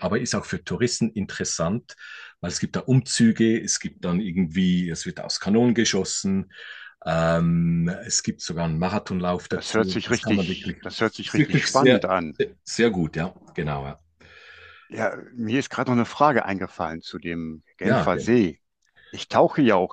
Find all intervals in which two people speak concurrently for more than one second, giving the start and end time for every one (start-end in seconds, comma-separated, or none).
9.5-12.1